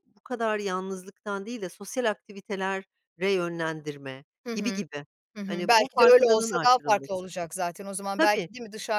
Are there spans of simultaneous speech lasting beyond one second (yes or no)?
yes